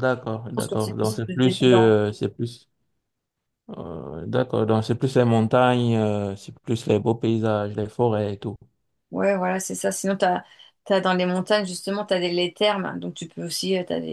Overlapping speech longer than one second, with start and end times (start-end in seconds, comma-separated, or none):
0.5-2.0